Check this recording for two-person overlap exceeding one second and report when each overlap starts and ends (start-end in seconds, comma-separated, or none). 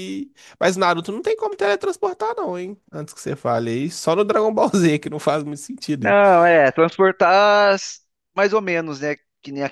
none